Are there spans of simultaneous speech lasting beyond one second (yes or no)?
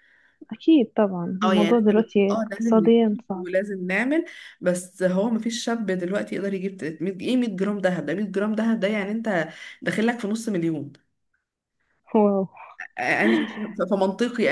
yes